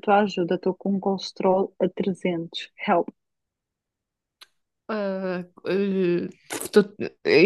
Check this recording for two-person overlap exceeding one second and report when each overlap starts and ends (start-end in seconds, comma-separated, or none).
none